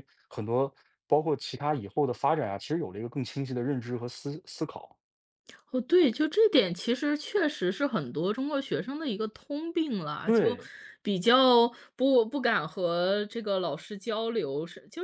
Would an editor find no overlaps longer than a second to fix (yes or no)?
yes